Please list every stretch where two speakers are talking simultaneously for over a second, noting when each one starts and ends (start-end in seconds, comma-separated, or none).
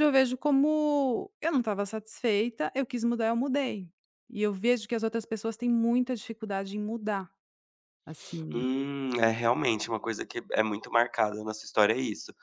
none